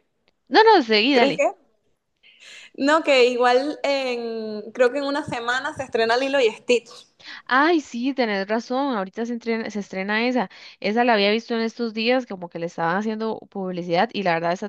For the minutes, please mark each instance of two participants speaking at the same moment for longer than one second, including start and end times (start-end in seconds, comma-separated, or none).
none